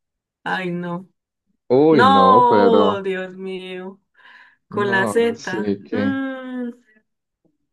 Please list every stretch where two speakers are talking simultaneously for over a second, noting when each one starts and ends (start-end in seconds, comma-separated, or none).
1.9-3.1, 4.7-6.2